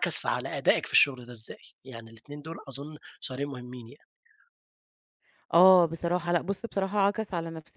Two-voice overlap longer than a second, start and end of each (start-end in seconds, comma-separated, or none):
none